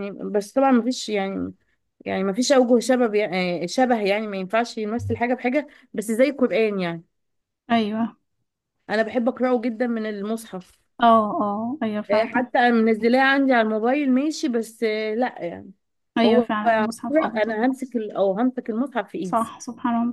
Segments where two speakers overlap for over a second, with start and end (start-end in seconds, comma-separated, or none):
16.2-17.6